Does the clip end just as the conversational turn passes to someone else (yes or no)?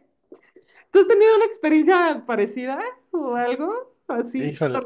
yes